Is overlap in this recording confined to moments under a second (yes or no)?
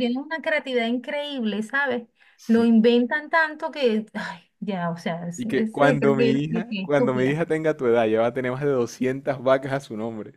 no